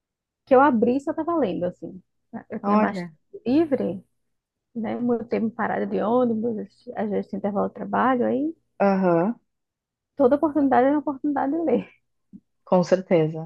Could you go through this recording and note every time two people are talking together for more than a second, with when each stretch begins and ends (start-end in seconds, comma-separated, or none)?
none